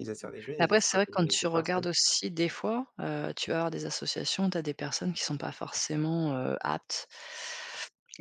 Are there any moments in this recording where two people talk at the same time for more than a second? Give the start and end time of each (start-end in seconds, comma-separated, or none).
0.6-1.8